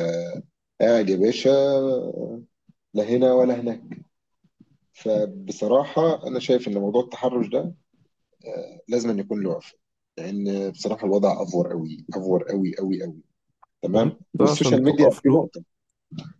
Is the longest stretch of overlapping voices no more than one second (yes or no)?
no